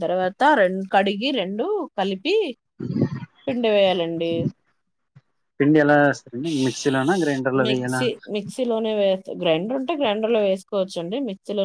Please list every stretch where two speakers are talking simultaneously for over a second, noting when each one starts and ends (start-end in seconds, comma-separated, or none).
none